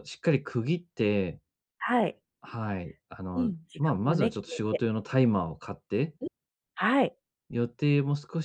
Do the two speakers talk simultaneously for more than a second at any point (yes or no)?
yes